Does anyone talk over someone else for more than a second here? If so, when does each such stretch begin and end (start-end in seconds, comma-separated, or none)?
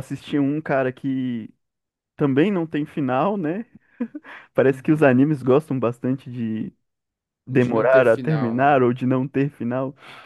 7.5-8.8